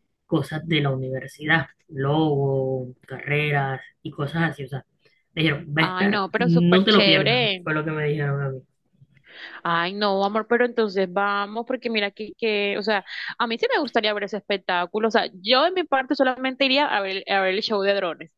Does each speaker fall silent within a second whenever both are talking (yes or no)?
no